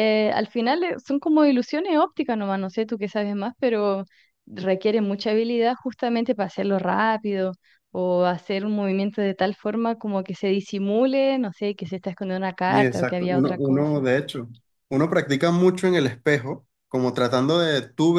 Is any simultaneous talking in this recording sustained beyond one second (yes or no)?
yes